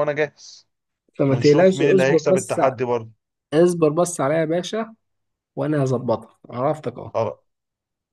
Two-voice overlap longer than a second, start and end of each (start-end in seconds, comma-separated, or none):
1.3-2.8